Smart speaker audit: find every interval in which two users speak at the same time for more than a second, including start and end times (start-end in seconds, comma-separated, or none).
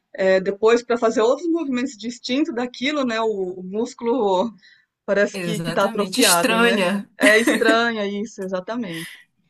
5.3-6.8